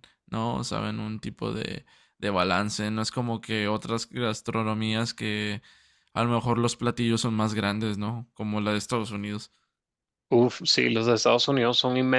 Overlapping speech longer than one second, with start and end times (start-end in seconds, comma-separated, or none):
none